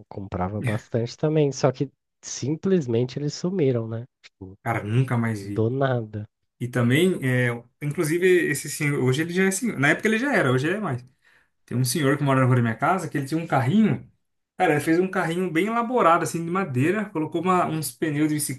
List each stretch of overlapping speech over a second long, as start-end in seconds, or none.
none